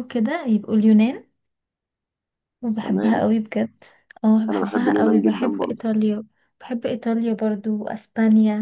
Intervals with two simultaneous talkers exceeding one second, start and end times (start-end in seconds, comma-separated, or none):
4.5-5.8